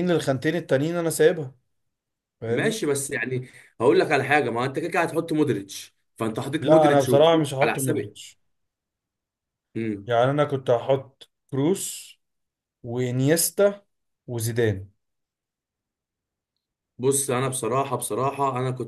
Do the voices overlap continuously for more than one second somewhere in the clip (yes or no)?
yes